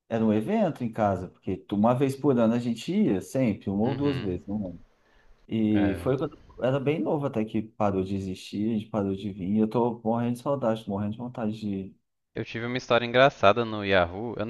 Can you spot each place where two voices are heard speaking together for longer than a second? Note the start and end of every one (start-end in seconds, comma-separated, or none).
none